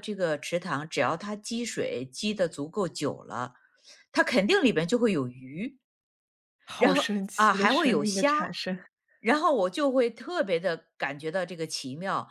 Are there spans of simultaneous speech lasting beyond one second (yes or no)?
yes